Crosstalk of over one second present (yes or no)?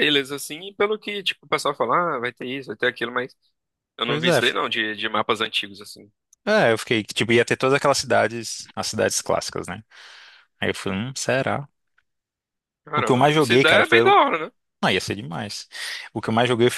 yes